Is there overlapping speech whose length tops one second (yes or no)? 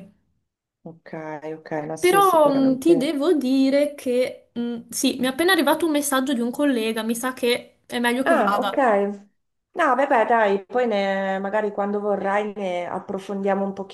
yes